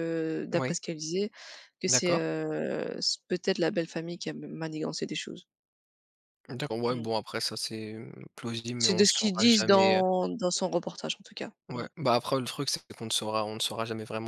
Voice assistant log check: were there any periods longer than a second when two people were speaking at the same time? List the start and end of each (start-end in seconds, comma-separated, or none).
8.8-10.0